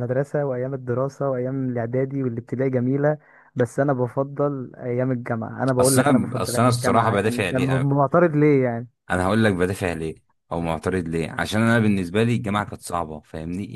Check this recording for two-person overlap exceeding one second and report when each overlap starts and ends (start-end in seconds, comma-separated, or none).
5.8-7.9